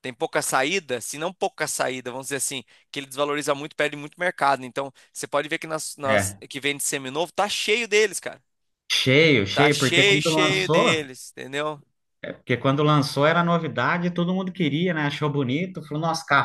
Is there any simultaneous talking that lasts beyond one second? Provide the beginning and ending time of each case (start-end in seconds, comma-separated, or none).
9.5-11.1